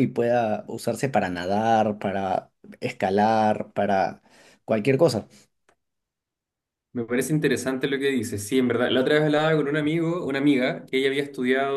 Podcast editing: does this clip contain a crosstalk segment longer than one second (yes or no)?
no